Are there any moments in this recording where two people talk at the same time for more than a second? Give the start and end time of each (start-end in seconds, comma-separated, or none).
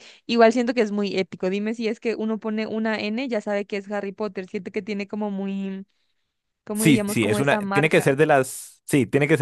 6.7-8.2